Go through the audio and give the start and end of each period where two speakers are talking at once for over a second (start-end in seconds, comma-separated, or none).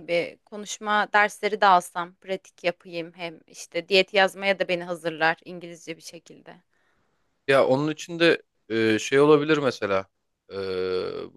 none